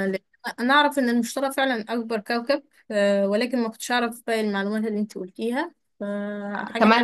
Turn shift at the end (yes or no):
yes